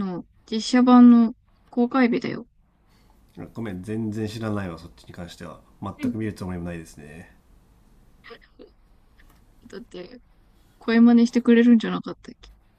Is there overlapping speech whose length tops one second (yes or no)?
no